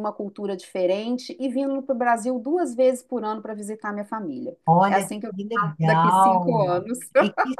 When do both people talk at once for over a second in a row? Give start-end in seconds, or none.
4.7-6.7